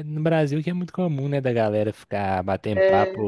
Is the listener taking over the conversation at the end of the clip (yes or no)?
no